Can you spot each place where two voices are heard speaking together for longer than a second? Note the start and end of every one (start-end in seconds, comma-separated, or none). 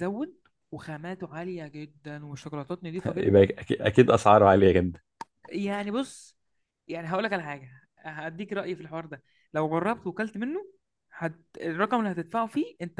none